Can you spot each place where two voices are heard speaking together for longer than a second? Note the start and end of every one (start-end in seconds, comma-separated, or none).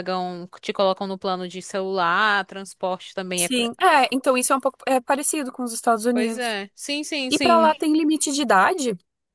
none